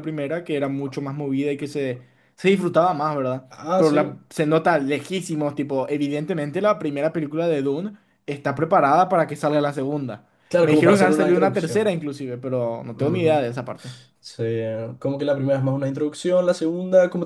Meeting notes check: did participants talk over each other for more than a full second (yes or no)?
yes